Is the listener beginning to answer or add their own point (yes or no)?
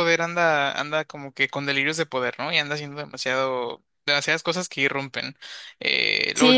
yes